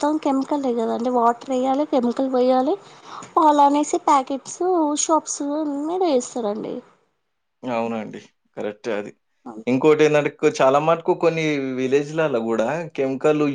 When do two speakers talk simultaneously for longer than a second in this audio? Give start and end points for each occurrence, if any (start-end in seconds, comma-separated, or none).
none